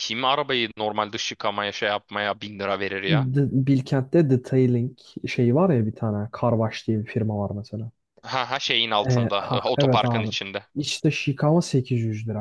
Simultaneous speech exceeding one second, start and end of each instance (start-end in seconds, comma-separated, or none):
9.1-10.3